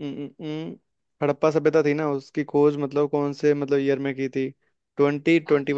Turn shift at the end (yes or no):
no